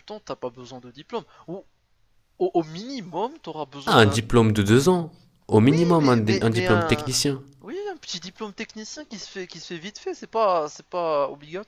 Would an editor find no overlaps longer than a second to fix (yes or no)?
no